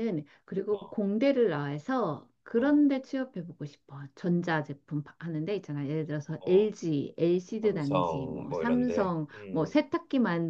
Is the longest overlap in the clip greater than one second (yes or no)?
yes